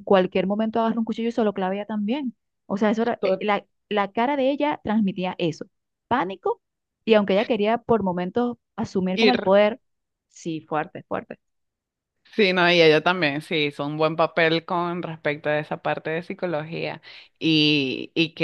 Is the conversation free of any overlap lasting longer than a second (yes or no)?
yes